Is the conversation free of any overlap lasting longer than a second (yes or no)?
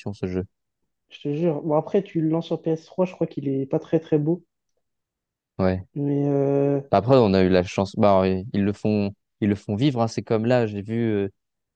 yes